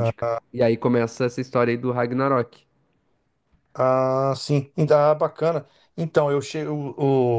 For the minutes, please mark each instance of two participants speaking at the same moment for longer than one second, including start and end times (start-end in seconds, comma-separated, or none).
none